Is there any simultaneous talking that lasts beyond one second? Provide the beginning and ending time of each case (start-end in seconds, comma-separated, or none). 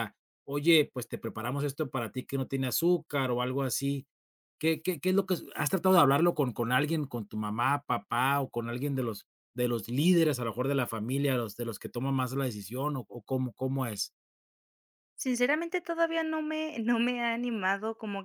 none